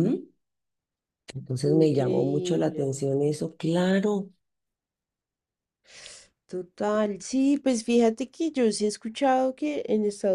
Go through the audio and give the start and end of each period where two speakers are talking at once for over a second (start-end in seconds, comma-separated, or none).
1.7-3.0